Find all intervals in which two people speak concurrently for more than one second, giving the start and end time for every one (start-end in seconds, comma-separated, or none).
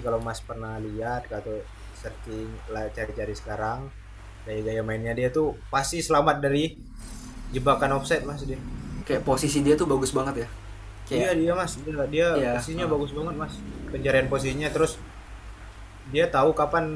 none